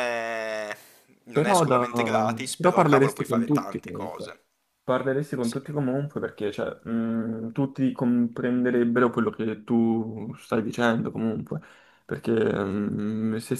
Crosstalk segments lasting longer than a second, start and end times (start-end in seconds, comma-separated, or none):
2.5-4.4